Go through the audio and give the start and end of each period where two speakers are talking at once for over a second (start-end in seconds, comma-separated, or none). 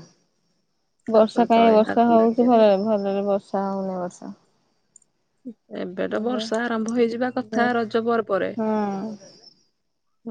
1.1-2.6